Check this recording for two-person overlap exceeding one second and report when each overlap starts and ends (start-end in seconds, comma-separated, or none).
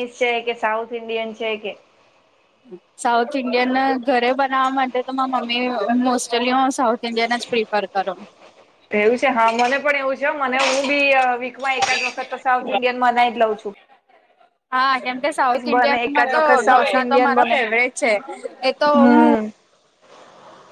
15.8-17.6